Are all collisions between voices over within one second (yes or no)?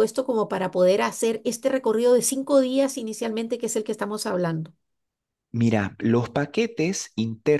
yes